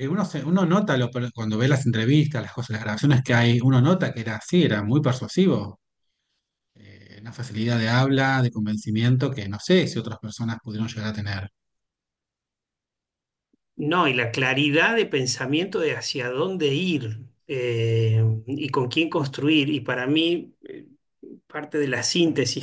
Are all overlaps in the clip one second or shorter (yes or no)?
yes